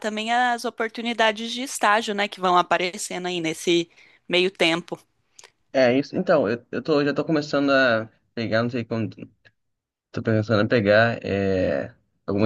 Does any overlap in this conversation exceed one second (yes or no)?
no